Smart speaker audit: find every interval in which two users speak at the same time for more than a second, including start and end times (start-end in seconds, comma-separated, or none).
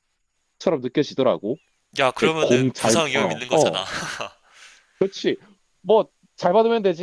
2.2-3.8